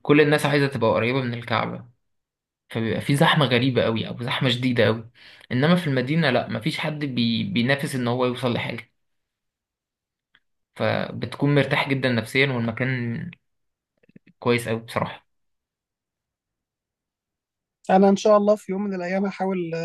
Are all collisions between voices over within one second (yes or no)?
yes